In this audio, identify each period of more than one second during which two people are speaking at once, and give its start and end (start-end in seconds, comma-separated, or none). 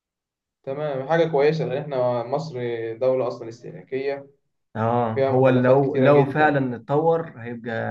5.1-6.6